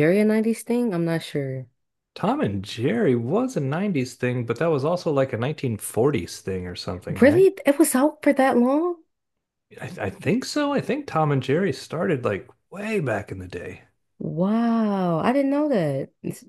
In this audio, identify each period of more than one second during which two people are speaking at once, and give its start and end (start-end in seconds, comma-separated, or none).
none